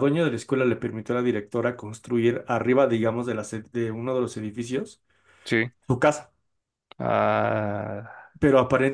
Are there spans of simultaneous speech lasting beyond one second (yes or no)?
no